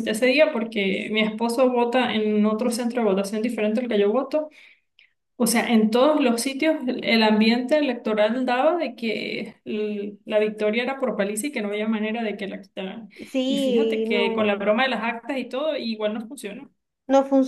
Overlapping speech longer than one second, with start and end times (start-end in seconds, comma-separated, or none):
13.4-14.7